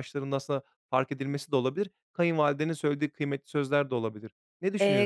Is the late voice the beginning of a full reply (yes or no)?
yes